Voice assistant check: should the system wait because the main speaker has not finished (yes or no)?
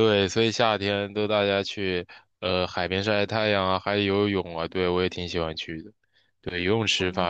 yes